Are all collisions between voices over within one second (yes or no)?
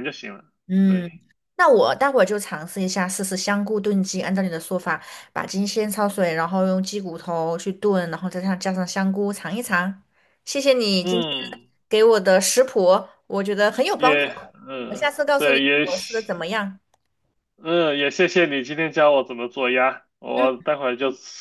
no